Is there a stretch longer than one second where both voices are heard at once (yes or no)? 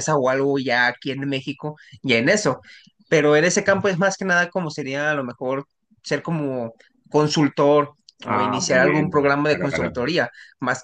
yes